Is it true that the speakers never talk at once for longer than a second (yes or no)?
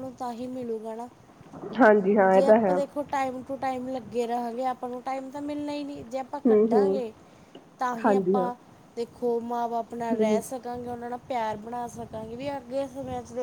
yes